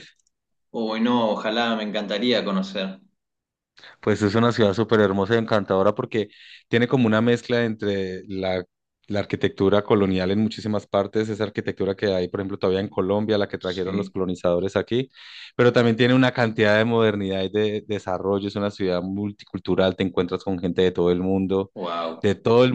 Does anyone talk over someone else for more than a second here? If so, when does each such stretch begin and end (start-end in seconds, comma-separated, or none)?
none